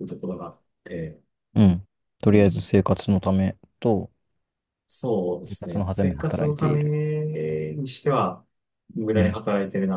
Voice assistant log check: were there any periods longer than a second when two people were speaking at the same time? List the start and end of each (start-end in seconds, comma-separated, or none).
5.4-7.0